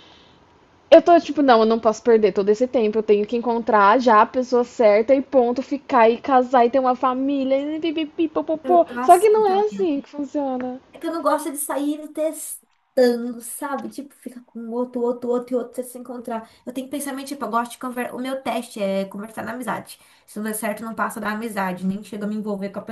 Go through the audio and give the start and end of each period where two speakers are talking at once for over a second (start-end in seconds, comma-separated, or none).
8.6-9.9